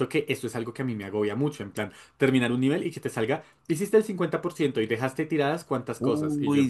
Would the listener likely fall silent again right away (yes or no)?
no